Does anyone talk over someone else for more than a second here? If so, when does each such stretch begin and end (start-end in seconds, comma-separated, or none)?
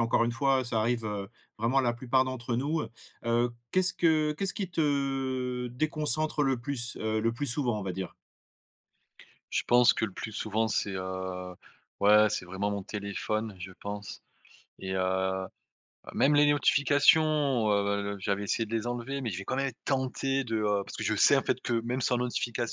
none